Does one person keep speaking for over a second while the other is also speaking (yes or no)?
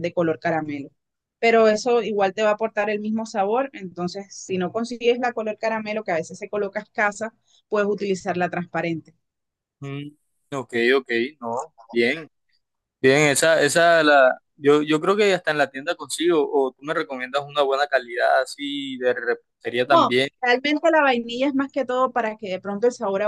no